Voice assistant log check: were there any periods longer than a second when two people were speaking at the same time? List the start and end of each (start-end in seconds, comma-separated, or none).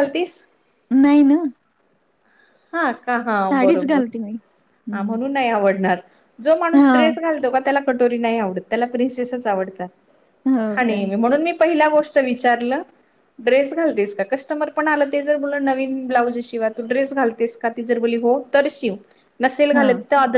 3.4-5.2